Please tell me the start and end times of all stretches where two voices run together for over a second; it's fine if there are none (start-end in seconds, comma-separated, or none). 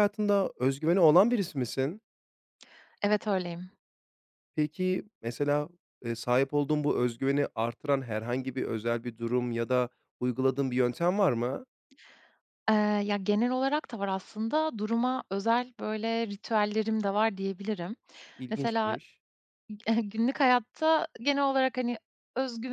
none